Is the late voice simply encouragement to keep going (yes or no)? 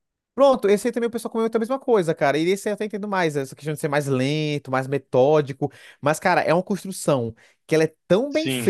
yes